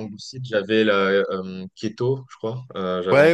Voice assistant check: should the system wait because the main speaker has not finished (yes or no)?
no